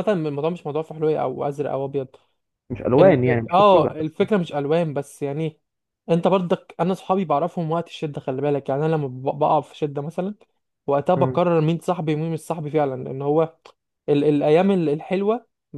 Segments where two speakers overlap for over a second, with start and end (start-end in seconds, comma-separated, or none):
3.0-4.2